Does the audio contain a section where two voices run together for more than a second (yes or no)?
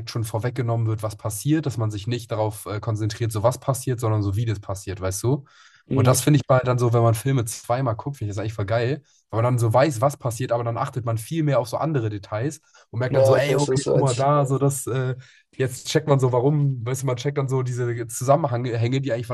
yes